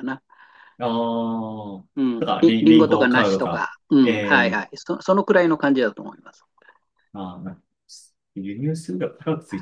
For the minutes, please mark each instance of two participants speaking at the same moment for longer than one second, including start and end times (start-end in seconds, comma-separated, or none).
2.0-4.7